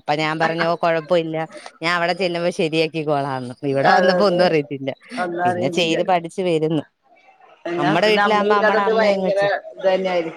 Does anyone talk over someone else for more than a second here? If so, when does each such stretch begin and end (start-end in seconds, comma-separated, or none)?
7.8-9.4